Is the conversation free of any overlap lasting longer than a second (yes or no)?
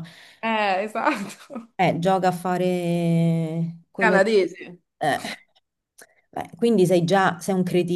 yes